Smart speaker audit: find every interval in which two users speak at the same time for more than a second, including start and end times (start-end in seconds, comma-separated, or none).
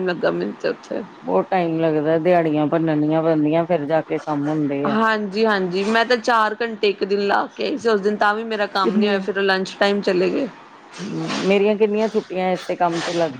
none